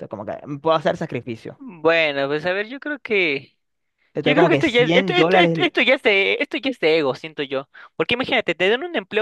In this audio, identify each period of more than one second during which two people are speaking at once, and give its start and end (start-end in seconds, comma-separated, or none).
4.2-5.7